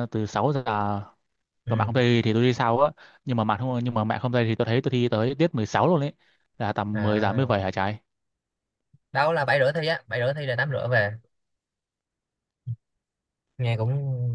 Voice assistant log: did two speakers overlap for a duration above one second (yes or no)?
no